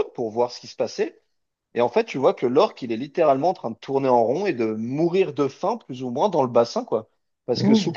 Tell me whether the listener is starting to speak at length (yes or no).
no